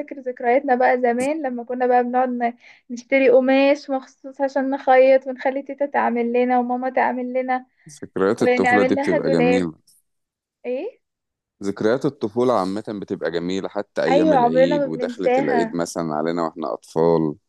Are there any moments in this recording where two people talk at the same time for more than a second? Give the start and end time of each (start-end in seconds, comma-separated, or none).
8.4-9.7, 14.1-15.8